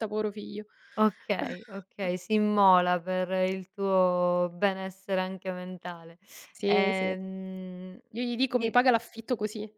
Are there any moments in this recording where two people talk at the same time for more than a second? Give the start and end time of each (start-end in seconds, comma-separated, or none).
none